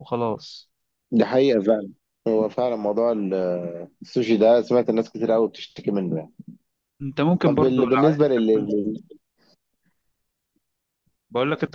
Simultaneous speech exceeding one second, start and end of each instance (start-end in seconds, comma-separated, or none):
7.4-8.7